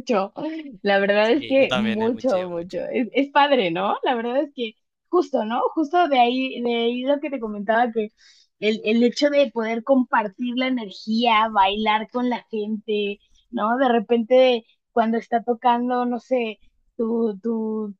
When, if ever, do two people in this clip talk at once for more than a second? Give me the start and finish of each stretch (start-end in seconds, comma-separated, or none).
1.2-2.9